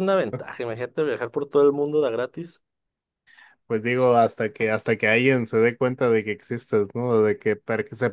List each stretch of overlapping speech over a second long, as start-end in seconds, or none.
none